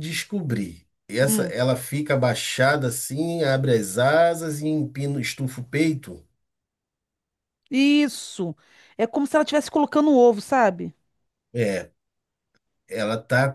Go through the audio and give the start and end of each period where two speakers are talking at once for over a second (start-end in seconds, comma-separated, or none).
none